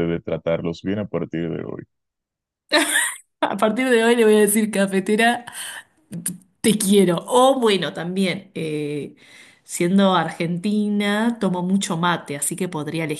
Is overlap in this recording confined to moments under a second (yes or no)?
yes